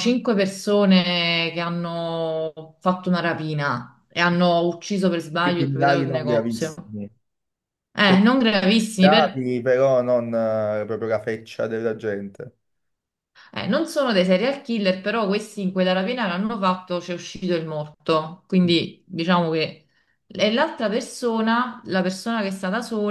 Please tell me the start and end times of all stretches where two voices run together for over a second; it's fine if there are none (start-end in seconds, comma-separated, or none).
5.4-6.7